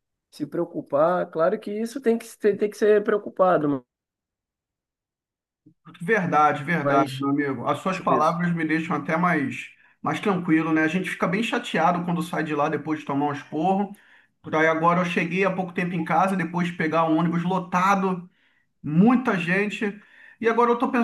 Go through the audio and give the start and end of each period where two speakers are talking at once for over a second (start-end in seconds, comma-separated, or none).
none